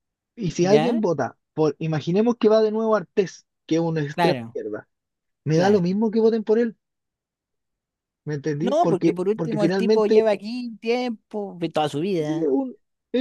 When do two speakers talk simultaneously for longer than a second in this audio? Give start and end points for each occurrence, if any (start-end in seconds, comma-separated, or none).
8.6-10.2